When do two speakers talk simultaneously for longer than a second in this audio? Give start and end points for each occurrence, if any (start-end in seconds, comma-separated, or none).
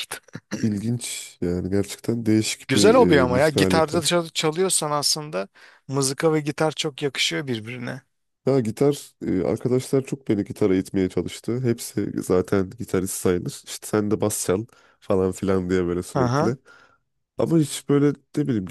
2.7-4.0